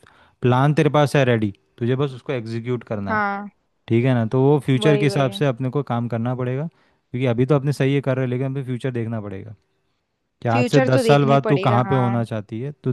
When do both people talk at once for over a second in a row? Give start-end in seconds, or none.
10.5-12.2